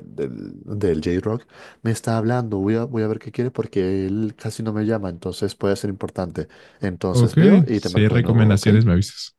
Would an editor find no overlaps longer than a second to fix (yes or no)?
no